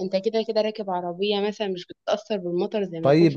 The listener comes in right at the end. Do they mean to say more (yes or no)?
yes